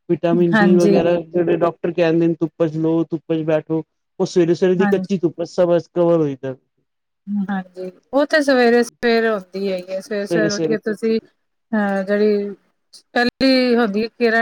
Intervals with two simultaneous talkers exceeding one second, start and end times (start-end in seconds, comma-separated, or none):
none